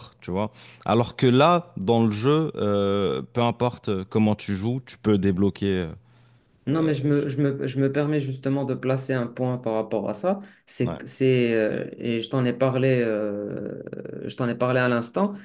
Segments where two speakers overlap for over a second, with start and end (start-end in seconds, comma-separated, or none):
none